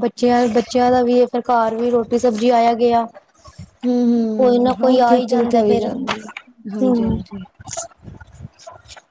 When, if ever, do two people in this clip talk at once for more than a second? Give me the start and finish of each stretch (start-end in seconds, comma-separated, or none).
4.4-5.8